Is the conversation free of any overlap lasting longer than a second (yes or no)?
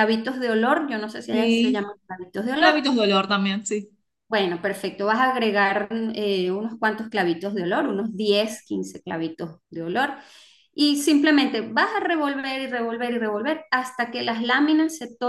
yes